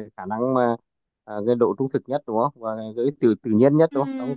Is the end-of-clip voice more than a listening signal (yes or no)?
yes